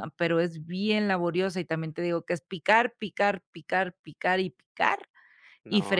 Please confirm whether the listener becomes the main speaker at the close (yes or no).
no